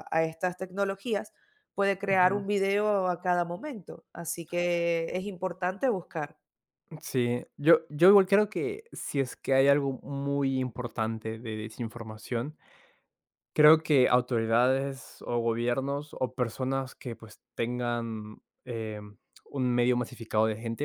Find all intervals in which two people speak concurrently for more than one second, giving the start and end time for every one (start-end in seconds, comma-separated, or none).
none